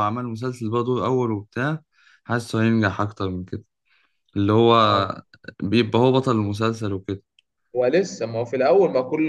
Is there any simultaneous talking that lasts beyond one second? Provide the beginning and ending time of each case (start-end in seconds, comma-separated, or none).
none